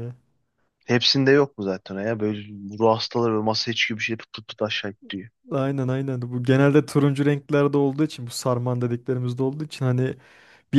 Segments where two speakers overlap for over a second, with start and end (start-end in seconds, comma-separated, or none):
none